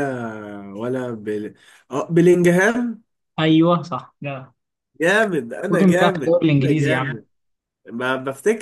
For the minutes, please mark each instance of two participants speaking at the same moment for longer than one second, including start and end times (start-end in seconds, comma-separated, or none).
5.7-7.2